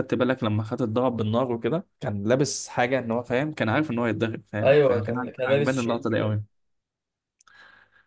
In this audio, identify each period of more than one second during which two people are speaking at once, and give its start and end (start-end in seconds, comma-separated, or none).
4.6-6.4